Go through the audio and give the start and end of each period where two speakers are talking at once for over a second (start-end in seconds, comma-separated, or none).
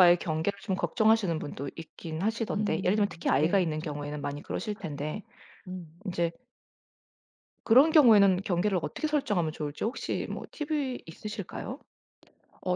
2.5-4.1